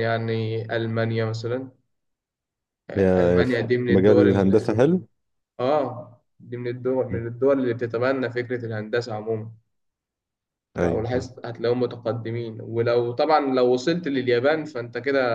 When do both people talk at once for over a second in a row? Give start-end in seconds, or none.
2.9-4.8